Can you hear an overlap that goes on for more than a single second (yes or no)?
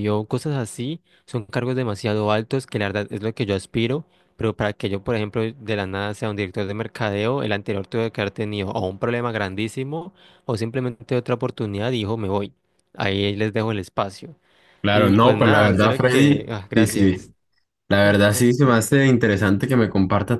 yes